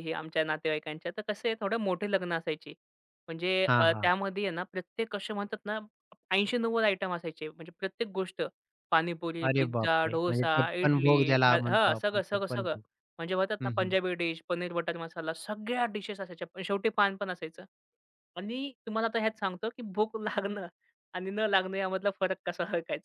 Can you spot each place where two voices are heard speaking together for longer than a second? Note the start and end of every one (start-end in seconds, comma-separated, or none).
9.5-12.8